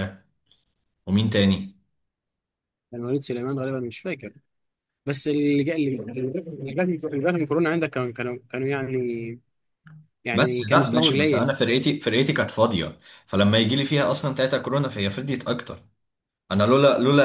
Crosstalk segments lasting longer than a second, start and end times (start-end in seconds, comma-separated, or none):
10.3-11.5